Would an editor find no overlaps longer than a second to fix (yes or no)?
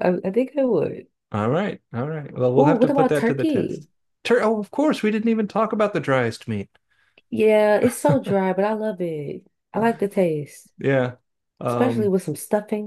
no